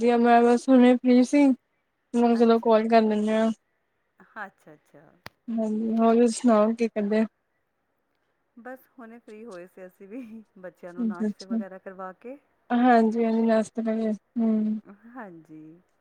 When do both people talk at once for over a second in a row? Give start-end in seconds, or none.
none